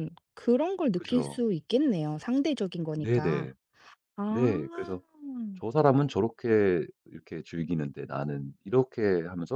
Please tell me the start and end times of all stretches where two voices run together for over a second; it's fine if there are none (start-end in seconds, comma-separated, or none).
none